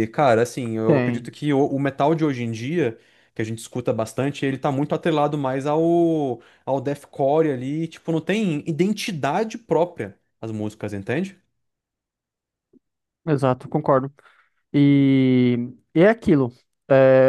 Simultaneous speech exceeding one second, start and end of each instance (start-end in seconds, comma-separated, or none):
none